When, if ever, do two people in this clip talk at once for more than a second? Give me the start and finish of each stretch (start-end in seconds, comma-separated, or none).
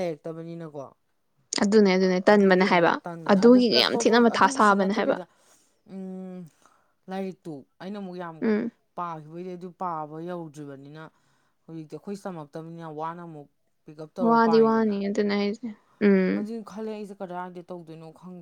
2.4-5.2